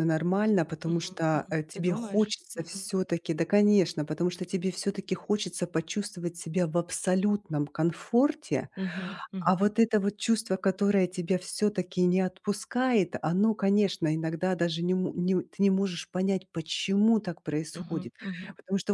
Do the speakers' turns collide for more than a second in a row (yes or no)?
yes